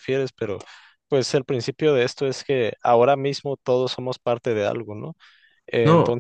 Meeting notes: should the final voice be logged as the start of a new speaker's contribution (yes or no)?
no